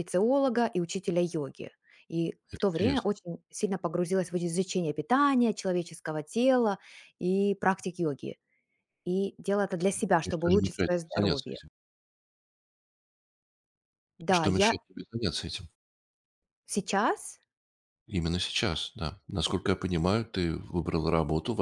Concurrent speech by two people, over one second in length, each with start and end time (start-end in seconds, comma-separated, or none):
10.2-11.6